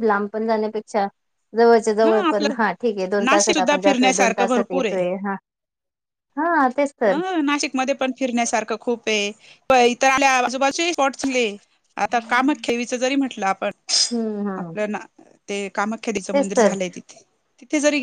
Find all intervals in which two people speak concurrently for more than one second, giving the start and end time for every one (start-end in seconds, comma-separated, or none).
3.2-4.8